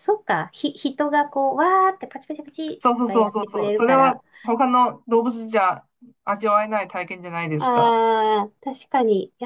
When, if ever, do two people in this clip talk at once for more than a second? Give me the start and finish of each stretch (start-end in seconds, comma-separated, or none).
2.8-4.2